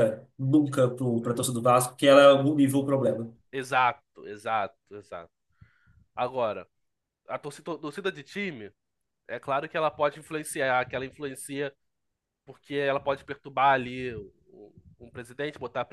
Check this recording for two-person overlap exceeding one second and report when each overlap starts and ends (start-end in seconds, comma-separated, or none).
none